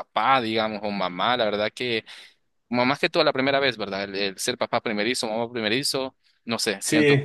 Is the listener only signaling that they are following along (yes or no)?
no